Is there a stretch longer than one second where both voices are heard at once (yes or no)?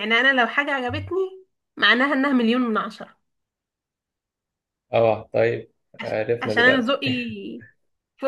no